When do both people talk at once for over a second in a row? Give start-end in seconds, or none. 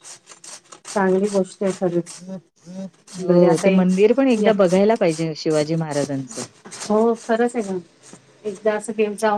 none